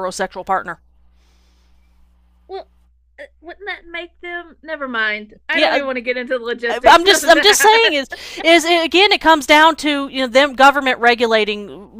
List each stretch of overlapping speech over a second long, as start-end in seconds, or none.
6.7-7.9